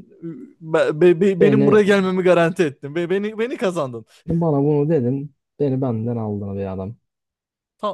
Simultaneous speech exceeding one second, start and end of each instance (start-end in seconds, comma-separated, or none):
none